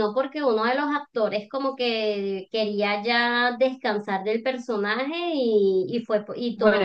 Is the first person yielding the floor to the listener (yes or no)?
yes